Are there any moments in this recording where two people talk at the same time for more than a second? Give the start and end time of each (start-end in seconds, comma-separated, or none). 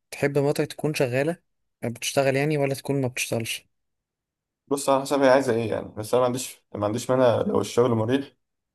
none